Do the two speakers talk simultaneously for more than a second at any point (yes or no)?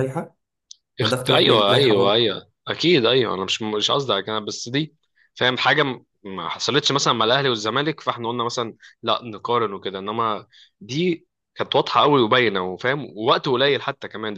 yes